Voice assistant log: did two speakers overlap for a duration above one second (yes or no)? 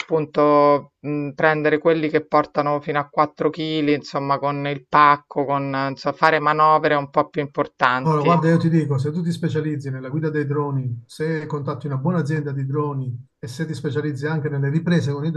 no